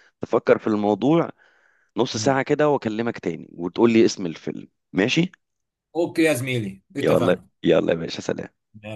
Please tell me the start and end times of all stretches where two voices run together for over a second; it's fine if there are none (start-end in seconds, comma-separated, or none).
none